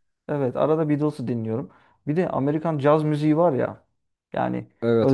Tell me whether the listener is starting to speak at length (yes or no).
no